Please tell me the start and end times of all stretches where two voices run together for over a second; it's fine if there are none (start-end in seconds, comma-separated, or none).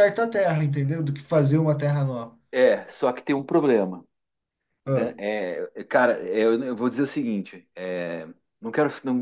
none